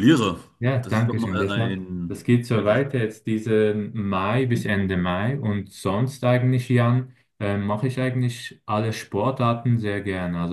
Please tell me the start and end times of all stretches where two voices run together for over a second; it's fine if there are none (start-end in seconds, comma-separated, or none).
0.8-2.8